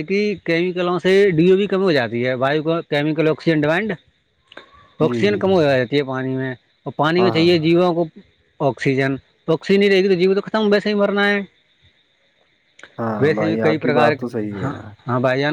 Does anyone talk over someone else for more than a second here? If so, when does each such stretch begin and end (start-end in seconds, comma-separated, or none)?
13.2-14.6